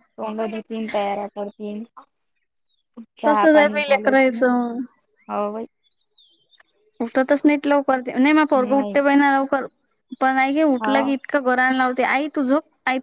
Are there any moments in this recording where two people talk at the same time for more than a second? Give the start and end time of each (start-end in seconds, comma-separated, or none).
3.3-4.5